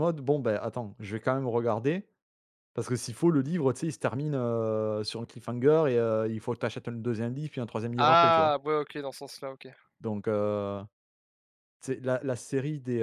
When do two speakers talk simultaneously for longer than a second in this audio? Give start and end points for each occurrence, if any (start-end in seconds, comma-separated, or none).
none